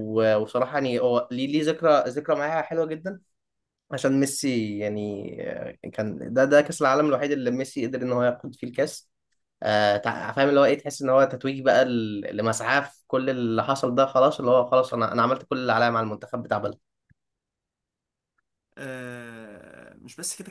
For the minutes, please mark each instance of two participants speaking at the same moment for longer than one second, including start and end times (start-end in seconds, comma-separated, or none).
none